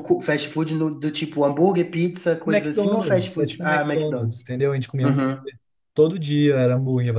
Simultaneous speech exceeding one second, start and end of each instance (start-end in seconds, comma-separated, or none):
2.4-4.4